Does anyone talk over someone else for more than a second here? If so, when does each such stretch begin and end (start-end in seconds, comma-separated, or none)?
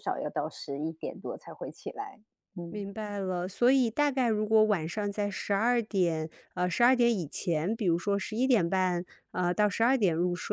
none